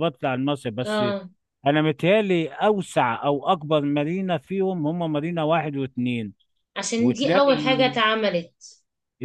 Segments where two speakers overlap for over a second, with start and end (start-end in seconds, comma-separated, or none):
none